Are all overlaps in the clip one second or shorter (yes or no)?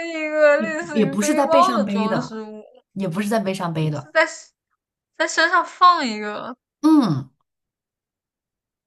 no